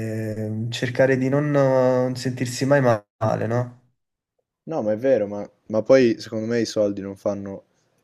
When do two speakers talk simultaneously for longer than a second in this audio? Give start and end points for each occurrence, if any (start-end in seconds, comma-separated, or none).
none